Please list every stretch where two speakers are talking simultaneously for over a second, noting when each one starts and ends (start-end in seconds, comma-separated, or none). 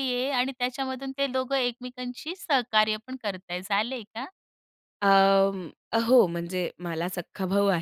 none